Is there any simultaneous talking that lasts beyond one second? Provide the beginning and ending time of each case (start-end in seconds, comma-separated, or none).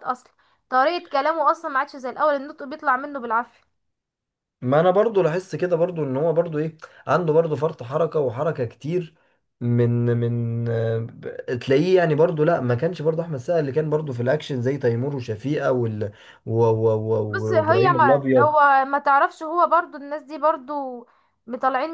17.3-18.5